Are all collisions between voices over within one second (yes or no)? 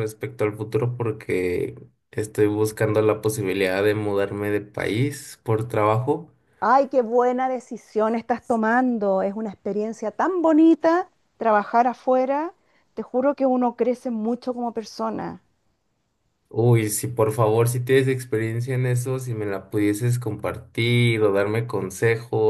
yes